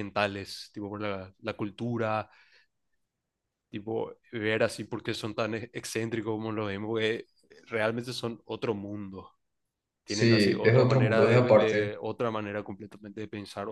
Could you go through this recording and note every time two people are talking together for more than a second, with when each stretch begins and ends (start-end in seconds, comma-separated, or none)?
10.1-11.9